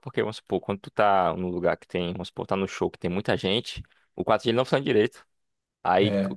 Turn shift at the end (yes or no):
no